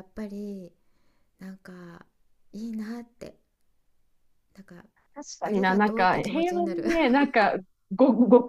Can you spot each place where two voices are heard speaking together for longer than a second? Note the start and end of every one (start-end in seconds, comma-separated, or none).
5.4-6.8